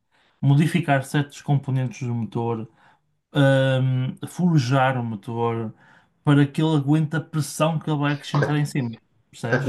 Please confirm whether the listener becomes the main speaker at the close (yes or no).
yes